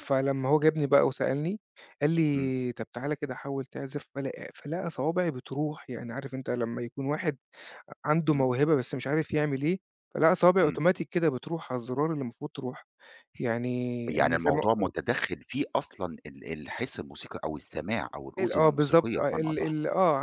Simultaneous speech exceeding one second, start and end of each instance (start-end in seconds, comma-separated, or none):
18.4-19.7